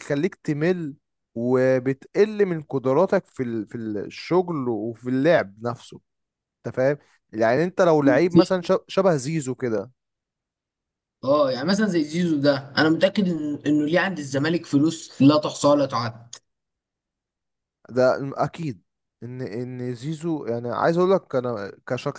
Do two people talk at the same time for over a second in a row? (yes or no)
no